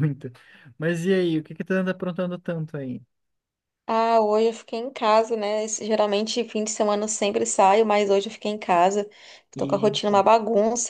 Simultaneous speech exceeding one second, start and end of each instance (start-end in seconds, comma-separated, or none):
none